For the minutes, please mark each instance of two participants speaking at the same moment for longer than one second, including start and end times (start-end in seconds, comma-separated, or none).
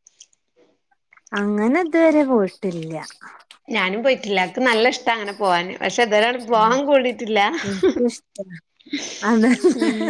none